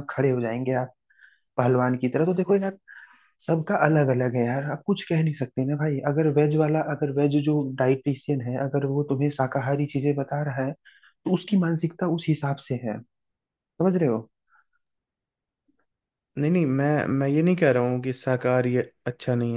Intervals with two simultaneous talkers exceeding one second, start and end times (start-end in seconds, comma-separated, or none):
none